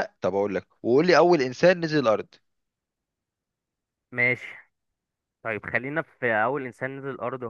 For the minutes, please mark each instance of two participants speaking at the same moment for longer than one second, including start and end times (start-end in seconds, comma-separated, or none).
none